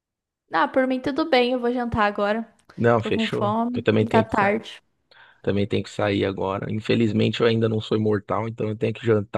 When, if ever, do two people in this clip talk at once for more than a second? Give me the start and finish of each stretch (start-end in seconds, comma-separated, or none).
3.0-4.7